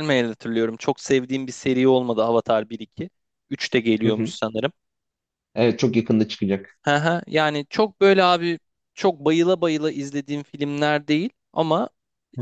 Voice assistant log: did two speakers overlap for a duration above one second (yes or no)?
no